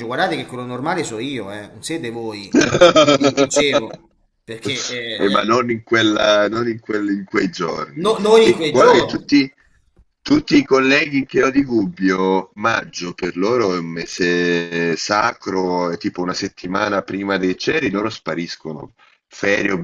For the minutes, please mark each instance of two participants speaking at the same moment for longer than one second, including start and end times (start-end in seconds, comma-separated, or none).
8.0-9.3